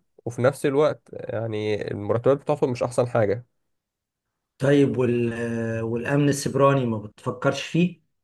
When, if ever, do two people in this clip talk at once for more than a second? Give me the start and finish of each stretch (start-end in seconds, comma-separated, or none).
none